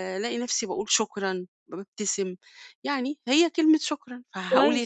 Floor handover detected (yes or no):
yes